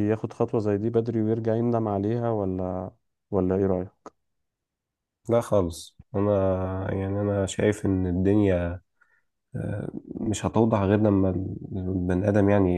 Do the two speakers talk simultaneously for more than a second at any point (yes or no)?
no